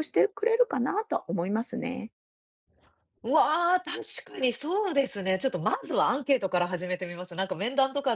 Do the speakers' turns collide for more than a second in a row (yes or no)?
no